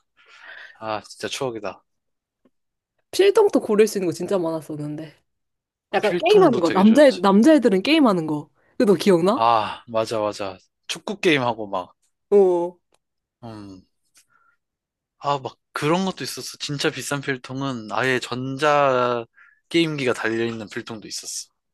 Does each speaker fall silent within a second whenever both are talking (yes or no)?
no